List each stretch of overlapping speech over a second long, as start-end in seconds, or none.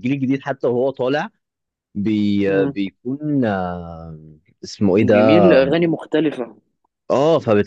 none